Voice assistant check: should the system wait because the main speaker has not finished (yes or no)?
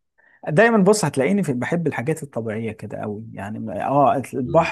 yes